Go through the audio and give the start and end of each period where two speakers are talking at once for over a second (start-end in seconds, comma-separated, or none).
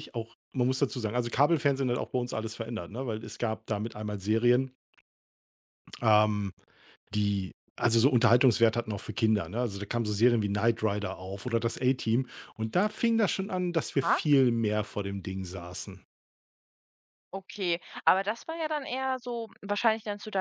none